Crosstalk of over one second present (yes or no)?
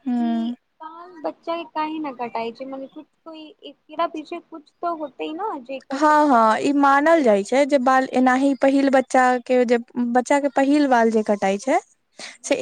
no